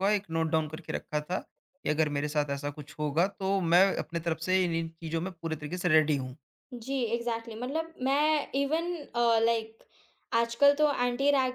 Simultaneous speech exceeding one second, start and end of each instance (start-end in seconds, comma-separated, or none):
none